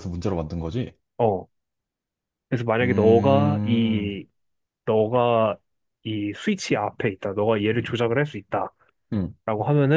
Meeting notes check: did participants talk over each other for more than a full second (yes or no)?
yes